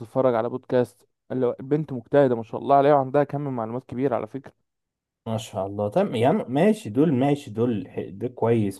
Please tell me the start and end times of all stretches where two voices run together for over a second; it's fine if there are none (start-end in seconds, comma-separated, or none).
none